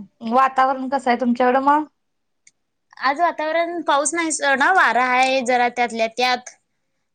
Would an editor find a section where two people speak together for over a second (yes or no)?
no